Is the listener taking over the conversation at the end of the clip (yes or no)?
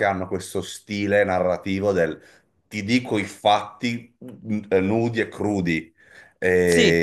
no